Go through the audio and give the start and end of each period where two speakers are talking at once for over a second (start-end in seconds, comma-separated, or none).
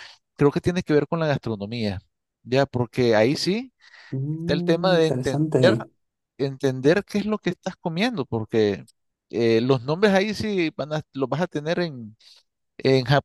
4.3-5.8